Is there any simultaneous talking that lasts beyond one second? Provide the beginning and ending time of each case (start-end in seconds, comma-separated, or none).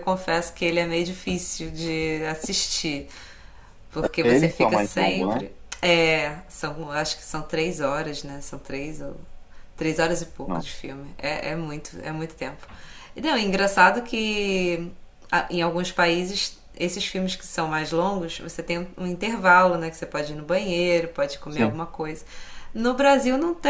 4.2-5.4